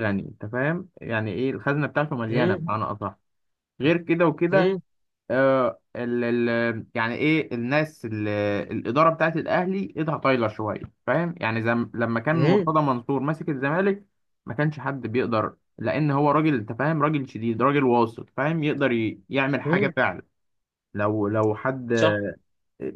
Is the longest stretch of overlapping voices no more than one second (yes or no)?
yes